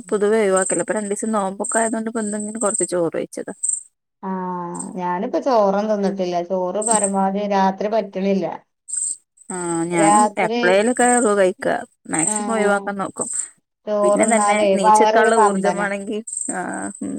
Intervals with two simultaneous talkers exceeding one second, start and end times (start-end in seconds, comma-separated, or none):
14.0-15.8